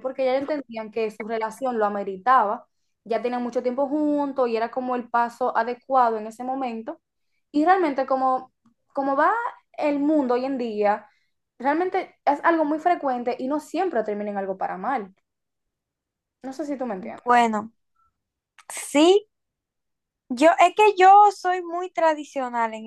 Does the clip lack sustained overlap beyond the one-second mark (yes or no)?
yes